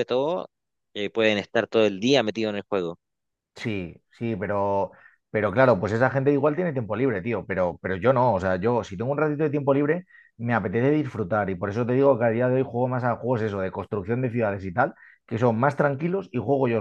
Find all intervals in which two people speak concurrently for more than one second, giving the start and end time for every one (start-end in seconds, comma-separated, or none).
none